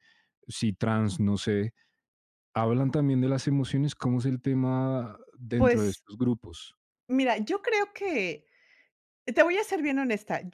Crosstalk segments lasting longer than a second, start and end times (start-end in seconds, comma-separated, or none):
none